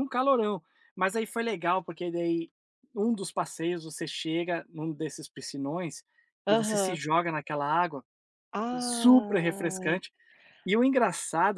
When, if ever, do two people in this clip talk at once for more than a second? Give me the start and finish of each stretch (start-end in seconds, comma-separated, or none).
8.8-10.0